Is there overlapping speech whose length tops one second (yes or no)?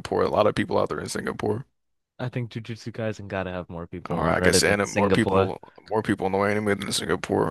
yes